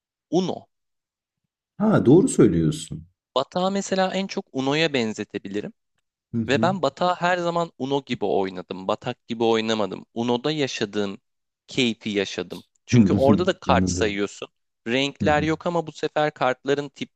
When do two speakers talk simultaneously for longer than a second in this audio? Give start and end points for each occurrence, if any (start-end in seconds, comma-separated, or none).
12.9-14.2